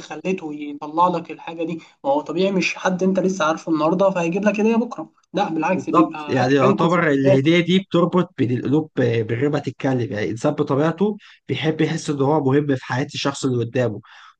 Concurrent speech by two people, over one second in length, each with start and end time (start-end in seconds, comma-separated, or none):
5.7-7.4